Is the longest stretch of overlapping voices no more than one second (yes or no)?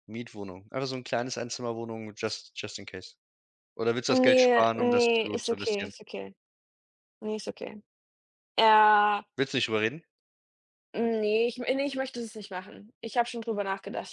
no